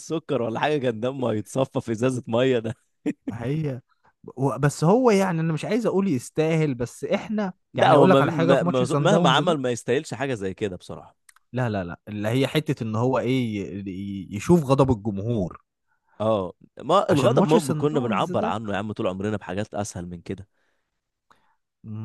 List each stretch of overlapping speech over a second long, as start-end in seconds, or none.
7.7-9.4, 17.1-18.6